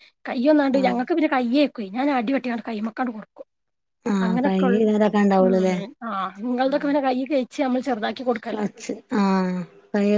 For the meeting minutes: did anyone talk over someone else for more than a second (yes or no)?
yes